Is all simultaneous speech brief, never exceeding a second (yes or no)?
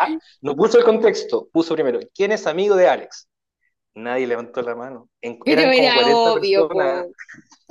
no